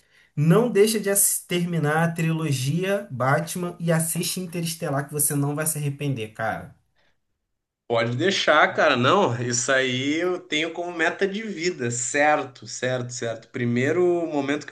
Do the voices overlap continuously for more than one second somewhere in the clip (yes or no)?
no